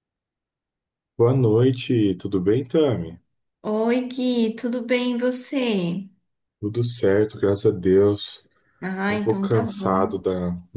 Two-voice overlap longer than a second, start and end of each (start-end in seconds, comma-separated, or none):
9.0-10.2